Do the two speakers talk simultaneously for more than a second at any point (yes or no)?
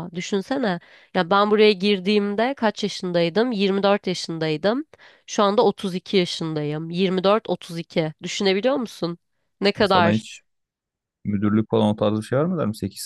no